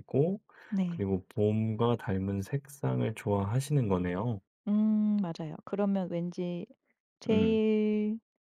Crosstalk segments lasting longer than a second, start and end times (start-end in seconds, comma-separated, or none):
none